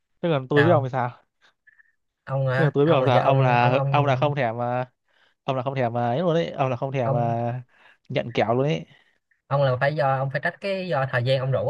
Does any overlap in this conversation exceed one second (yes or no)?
yes